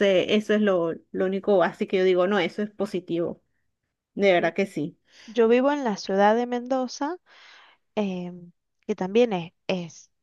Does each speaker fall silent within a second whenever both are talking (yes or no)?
yes